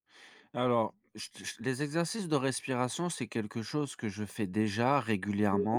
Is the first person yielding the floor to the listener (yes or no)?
no